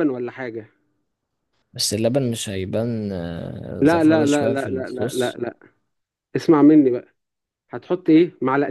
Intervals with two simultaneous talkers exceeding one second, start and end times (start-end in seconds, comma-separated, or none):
3.8-5.4